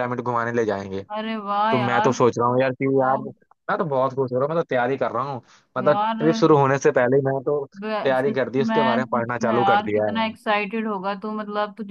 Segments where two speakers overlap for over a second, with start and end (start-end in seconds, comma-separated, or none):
7.8-10.2